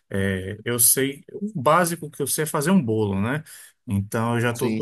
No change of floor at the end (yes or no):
yes